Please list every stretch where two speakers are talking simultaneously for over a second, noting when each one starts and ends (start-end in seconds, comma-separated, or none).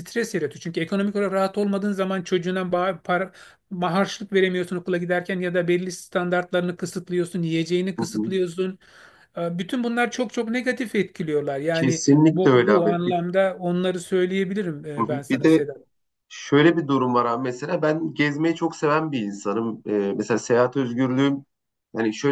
11.7-13.2